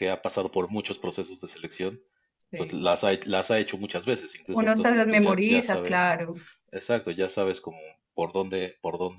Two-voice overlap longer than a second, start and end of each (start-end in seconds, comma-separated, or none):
4.5-6.0